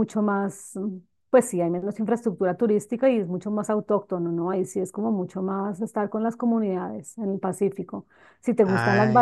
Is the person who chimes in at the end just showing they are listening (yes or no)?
yes